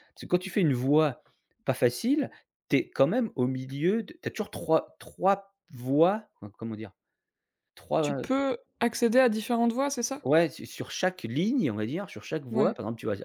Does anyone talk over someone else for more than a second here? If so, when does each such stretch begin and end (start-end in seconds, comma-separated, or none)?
none